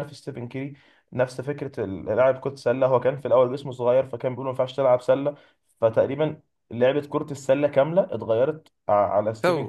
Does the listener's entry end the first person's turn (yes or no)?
no